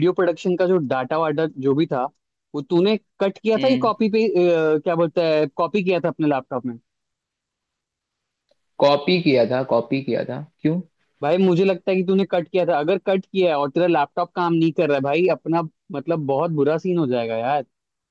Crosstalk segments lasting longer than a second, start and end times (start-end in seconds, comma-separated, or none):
none